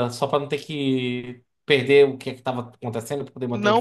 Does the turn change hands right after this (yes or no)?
yes